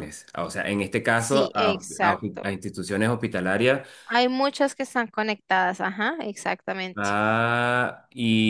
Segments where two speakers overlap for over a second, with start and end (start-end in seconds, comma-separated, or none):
1.1-2.6